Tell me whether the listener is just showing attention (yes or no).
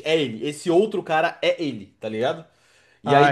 yes